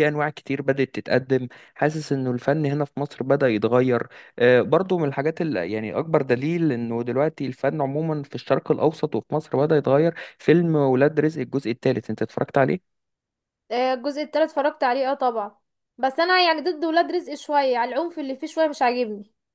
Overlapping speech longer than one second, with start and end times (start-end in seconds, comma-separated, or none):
none